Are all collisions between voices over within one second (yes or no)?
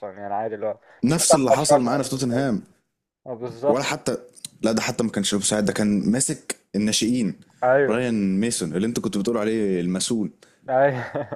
no